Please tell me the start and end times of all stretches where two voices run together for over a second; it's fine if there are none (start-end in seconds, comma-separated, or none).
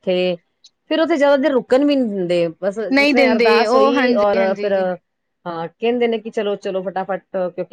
3.0-4.7